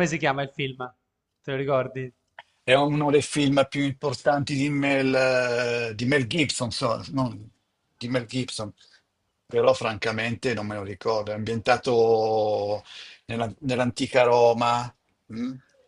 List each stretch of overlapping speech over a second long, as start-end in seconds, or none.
none